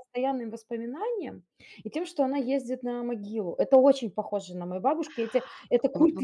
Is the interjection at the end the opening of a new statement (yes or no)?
yes